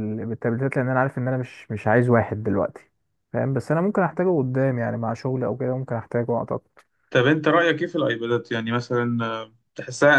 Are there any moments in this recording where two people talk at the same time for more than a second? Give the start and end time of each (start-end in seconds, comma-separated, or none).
none